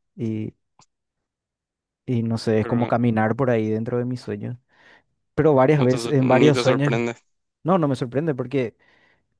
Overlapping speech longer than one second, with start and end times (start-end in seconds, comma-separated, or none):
5.8-7.0